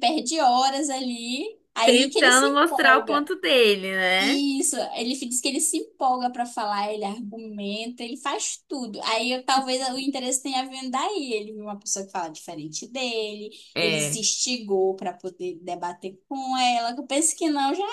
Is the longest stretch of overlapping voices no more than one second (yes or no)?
no